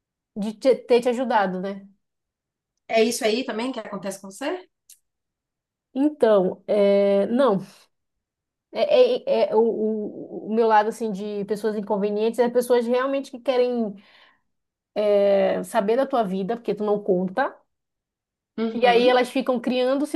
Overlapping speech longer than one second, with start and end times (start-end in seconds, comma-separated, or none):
none